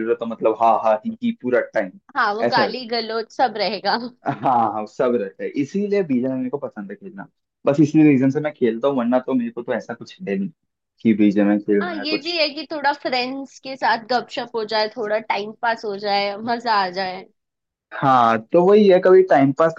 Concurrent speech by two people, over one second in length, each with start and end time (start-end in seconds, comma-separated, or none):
none